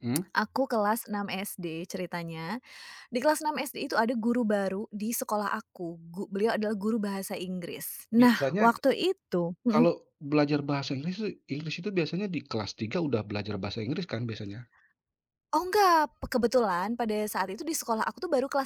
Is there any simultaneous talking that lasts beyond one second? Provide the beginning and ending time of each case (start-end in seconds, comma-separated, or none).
none